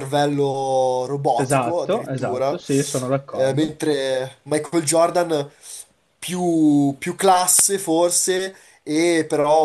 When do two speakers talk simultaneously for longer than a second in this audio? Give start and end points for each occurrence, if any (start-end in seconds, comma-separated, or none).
1.3-2.6